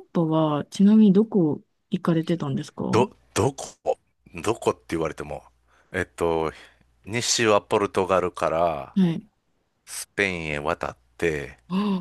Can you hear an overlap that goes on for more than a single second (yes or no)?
no